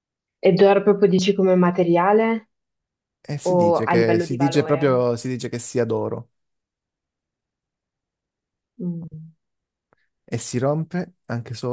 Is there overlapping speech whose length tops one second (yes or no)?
yes